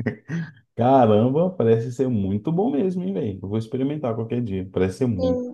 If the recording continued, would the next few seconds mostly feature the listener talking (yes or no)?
yes